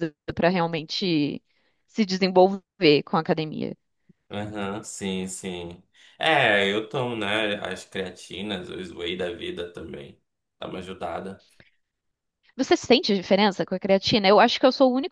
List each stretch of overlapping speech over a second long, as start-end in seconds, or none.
none